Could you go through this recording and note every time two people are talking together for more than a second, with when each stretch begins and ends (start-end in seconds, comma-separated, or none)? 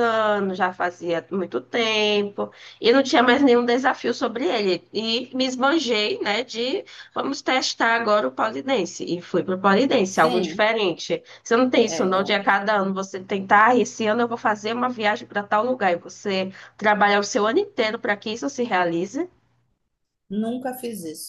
none